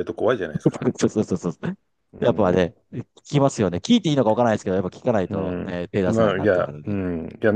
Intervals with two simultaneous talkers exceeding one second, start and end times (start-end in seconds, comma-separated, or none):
5.3-7.0